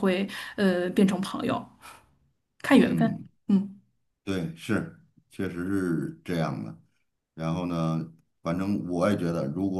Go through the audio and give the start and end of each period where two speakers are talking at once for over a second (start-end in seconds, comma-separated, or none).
none